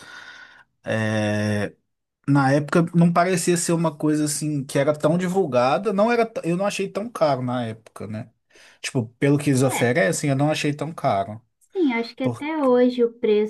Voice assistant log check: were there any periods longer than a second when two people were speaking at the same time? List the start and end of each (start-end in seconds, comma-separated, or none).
none